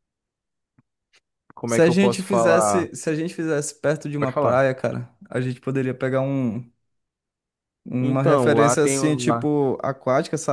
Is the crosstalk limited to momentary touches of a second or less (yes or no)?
no